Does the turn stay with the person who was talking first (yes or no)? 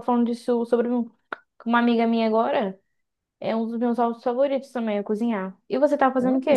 no